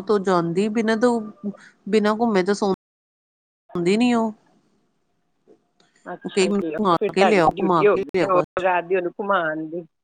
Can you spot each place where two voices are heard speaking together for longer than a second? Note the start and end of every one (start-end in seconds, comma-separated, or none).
6.3-8.4